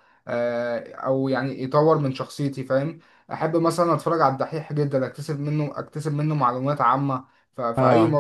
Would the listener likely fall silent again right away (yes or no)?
yes